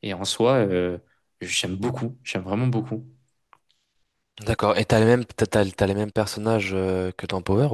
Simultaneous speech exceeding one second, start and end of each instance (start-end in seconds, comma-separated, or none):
none